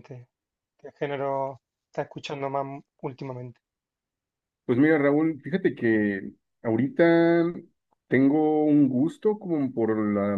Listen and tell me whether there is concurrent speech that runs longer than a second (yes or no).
no